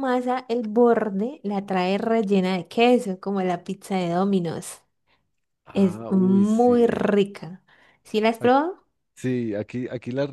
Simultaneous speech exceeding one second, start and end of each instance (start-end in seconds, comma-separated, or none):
5.7-7.1